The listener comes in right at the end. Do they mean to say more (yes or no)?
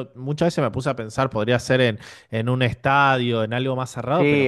yes